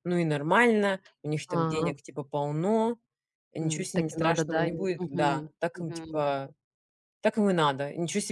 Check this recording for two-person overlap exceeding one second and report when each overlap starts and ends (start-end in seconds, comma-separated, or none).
3.6-6.2